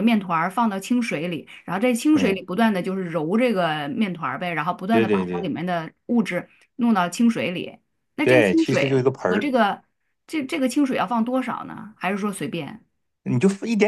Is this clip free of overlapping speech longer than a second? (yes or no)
no